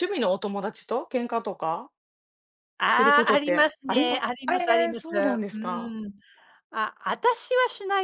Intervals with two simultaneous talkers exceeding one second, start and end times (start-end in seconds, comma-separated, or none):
2.9-6.0